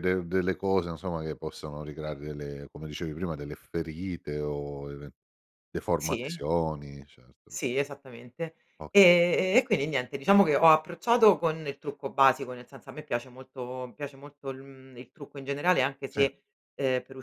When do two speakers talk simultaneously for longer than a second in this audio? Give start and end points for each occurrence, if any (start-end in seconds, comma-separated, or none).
none